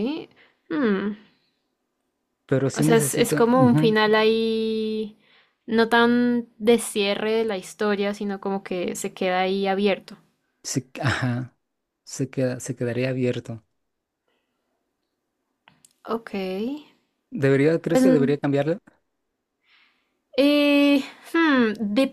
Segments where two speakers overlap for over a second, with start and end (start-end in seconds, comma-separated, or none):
2.7-4.0